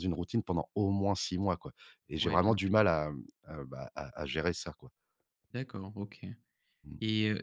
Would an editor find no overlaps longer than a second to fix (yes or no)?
yes